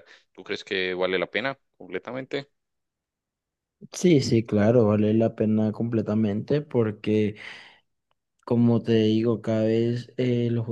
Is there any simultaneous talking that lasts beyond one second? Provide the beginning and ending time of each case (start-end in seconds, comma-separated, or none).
none